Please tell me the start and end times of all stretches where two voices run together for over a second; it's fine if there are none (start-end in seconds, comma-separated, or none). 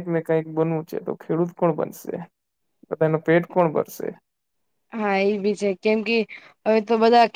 none